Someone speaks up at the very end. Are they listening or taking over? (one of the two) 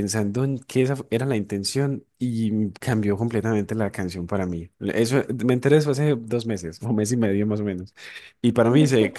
listening